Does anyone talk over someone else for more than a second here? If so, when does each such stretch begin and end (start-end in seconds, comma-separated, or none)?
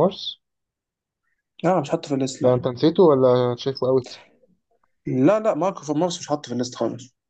none